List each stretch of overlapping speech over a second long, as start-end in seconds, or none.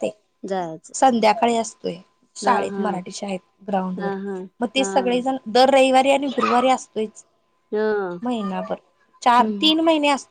none